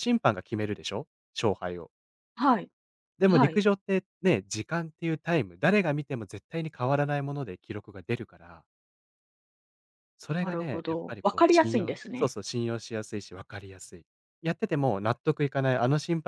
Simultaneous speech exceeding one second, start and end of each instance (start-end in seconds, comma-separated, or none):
10.4-12.3